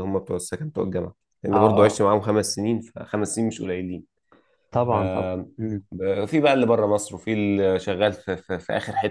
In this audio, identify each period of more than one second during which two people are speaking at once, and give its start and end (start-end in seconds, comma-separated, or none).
none